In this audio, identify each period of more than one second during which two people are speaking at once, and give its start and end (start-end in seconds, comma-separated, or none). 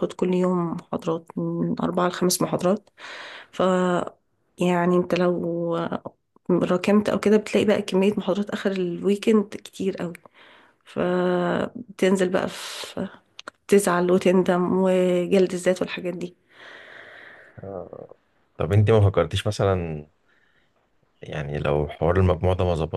none